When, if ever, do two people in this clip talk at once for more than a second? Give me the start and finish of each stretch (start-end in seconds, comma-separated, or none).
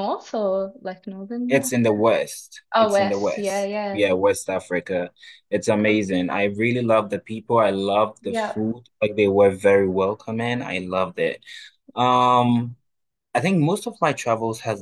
2.7-4.0